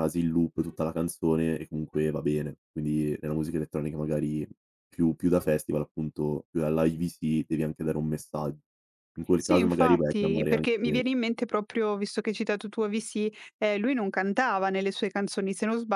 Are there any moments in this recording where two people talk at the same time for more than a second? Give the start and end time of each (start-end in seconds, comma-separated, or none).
9.3-11.0